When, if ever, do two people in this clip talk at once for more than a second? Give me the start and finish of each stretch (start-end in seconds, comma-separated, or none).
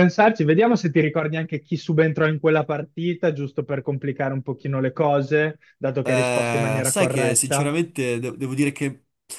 6.0-7.7